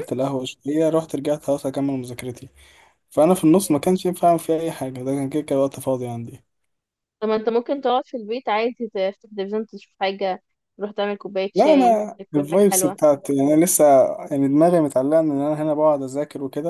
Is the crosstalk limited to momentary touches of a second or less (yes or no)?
no